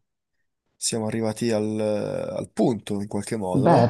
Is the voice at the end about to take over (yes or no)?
yes